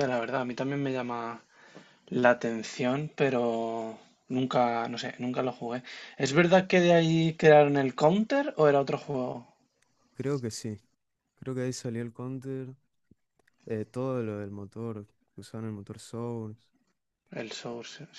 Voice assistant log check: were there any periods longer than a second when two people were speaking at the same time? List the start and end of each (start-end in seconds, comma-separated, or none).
none